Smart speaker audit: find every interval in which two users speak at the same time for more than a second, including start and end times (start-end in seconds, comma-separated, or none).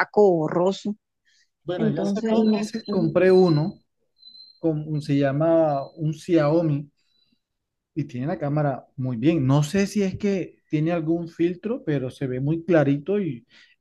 1.8-3.1